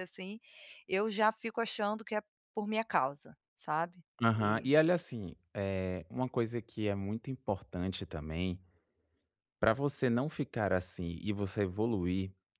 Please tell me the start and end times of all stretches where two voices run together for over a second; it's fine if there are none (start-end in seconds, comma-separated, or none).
none